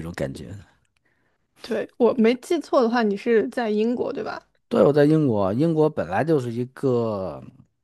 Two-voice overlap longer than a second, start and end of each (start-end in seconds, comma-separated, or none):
none